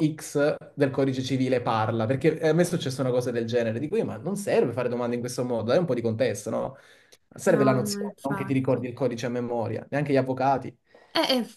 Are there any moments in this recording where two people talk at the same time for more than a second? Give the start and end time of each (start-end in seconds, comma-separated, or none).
7.4-8.9